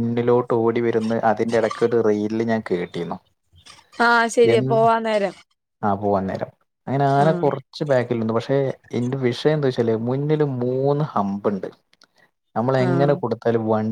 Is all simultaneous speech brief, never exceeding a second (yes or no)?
yes